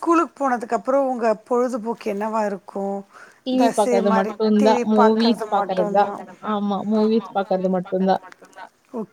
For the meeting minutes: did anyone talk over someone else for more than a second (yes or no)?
yes